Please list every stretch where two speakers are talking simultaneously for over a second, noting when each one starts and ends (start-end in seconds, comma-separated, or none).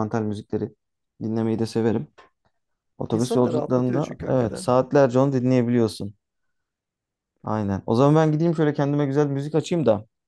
3.1-4.7